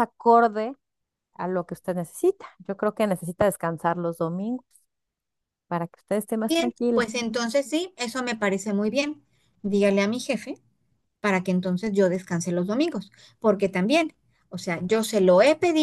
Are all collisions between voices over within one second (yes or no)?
yes